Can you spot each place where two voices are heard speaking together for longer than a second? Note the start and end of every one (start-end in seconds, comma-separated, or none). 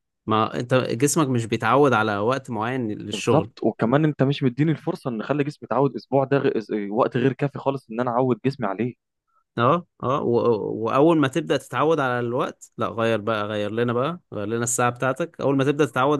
none